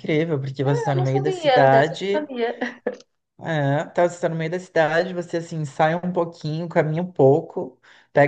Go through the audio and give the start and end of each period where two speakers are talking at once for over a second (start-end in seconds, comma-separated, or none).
0.9-2.3